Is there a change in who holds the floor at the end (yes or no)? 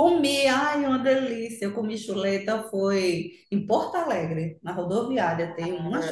yes